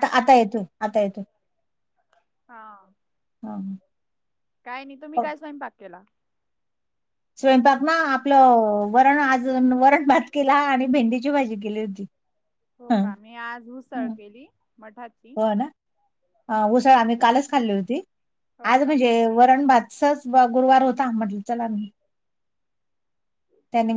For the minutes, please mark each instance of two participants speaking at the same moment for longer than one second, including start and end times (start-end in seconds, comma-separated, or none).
none